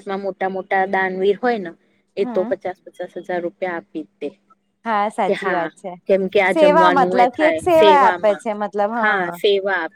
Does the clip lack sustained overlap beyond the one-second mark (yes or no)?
no